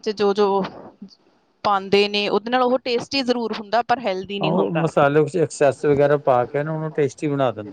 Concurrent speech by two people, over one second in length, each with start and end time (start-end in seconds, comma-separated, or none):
none